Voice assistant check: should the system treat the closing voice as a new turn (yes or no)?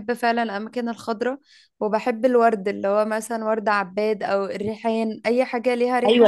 yes